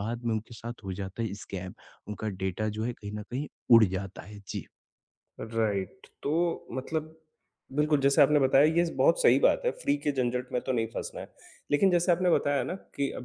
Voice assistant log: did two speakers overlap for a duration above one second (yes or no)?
no